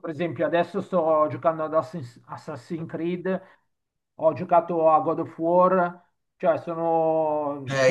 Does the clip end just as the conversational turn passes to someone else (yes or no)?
yes